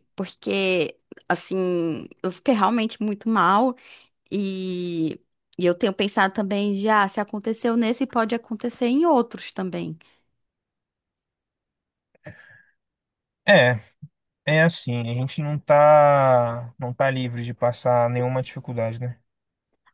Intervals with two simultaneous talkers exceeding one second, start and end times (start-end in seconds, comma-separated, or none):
none